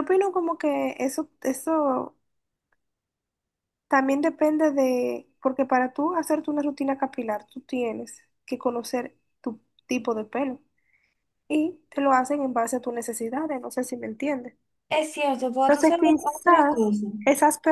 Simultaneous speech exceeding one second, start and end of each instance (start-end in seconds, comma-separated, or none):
15.7-17.1